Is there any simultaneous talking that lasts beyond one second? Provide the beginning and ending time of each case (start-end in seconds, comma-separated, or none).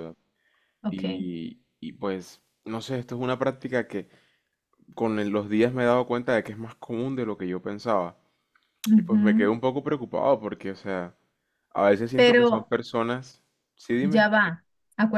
none